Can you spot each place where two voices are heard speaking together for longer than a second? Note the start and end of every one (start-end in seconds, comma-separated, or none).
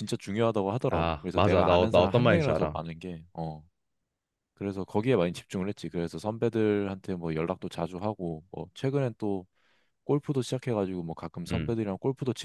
0.9-2.8